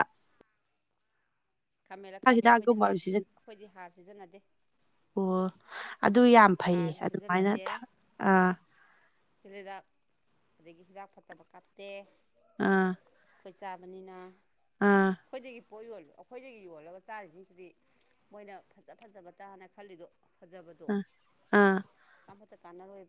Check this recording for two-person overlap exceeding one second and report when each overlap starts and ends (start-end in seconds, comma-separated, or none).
none